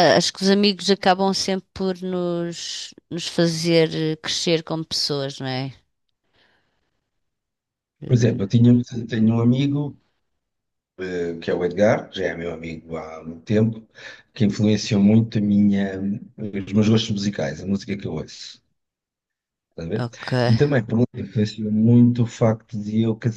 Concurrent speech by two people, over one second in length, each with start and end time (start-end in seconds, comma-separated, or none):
none